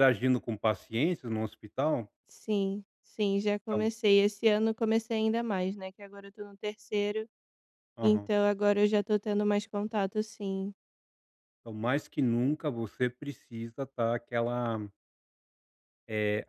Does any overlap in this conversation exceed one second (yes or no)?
no